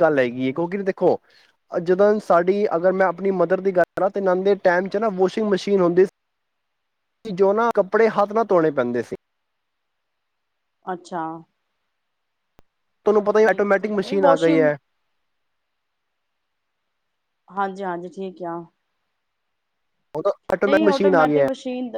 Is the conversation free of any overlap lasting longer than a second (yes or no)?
no